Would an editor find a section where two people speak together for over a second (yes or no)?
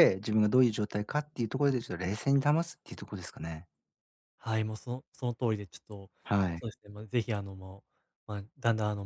no